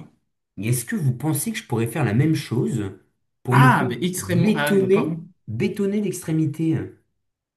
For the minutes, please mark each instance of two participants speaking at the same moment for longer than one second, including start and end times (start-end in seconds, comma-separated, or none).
3.5-5.1